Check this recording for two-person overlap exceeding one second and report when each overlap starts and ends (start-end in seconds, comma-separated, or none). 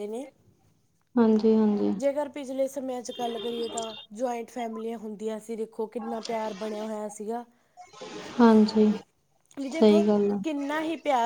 none